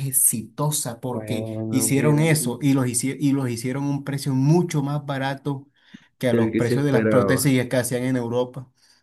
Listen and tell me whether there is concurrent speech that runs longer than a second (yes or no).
yes